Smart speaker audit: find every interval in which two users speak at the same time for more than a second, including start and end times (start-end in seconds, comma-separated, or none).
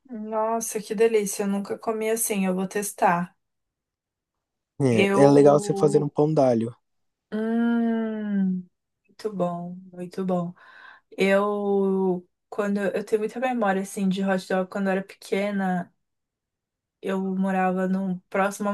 4.9-6.1